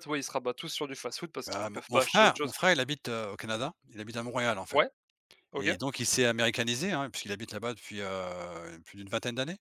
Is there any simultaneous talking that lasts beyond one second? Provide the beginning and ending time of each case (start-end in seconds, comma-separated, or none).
1.5-2.7